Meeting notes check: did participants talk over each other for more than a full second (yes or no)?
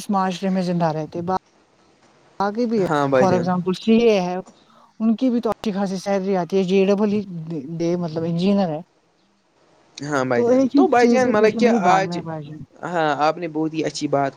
yes